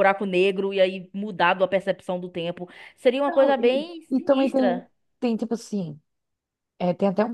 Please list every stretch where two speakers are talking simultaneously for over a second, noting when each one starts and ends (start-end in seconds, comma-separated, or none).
3.2-4.9